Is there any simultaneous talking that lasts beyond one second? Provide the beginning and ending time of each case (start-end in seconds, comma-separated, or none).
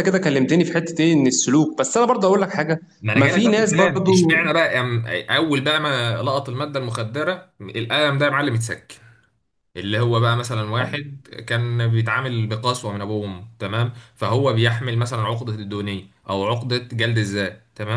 3.1-4.4